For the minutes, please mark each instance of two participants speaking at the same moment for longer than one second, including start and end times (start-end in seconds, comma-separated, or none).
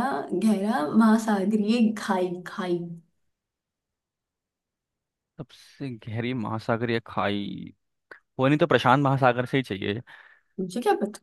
none